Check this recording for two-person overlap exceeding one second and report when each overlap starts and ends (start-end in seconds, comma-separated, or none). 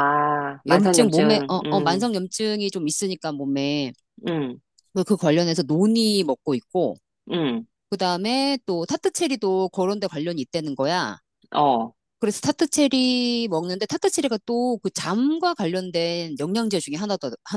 0.7-2.0